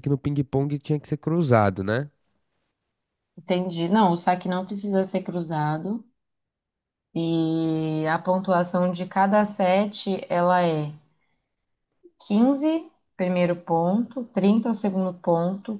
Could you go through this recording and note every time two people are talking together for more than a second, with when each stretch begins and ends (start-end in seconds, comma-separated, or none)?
none